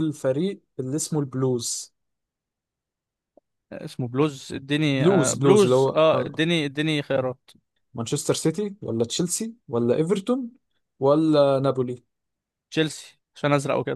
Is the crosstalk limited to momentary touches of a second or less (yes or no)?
no